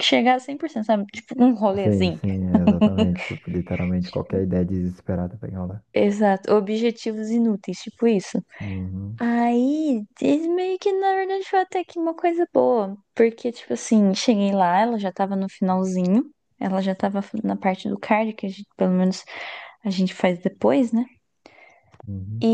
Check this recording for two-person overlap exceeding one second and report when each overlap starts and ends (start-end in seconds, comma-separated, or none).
none